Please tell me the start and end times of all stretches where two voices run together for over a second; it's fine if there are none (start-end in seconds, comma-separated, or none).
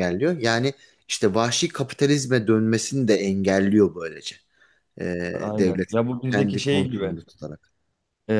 5.6-7.2